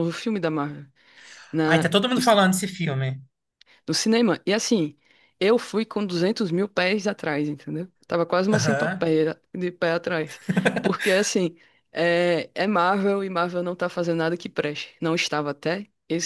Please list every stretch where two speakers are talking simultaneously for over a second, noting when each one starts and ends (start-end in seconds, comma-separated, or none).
none